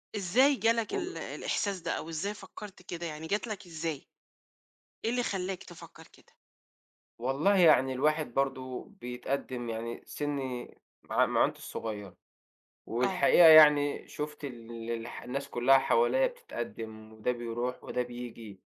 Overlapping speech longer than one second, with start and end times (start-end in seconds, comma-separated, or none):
none